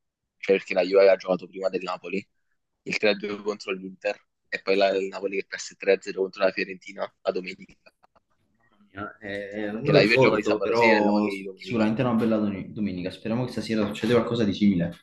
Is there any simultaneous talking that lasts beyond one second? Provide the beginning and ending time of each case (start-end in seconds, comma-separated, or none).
9.8-11.9